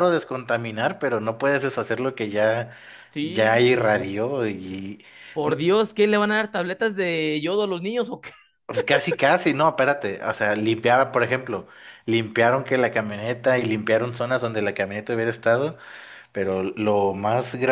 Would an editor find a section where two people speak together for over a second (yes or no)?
no